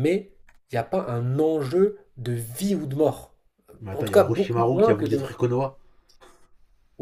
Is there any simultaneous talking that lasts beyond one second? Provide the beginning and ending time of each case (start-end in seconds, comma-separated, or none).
3.9-5.3